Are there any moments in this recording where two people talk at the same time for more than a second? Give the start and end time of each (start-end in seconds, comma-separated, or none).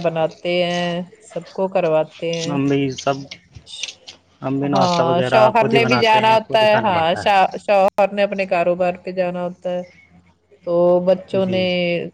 4.7-7.3